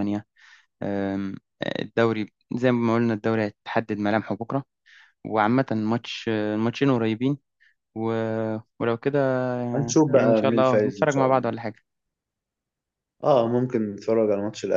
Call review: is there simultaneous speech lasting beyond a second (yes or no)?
yes